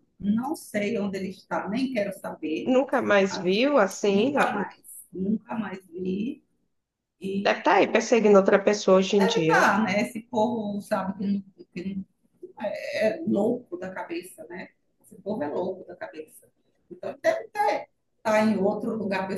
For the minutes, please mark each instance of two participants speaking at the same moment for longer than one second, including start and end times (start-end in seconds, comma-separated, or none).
none